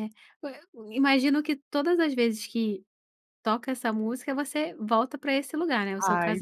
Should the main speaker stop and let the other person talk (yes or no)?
yes